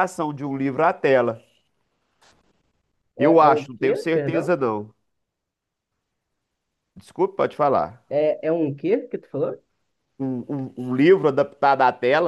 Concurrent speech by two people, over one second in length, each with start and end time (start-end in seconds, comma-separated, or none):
3.2-4.6